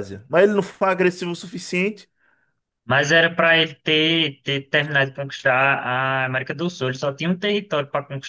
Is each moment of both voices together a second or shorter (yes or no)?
yes